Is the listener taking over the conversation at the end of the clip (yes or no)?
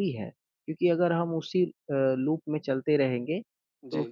no